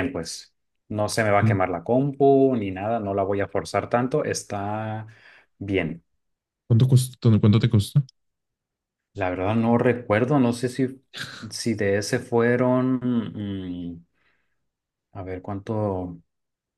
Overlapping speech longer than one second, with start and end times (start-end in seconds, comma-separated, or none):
none